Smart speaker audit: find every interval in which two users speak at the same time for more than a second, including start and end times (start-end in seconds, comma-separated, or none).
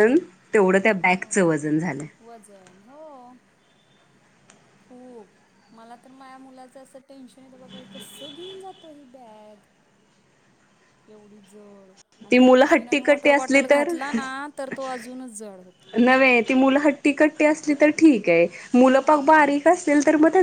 12.3-13.9